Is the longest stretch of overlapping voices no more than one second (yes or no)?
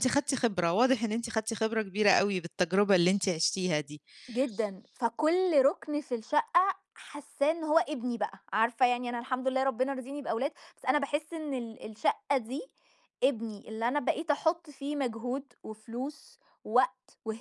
yes